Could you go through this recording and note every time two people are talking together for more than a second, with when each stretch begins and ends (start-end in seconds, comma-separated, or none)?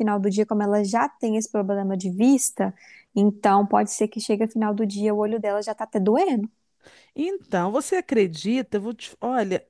none